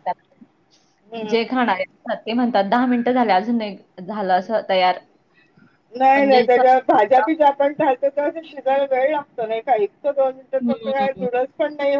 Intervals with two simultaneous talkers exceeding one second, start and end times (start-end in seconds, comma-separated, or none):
none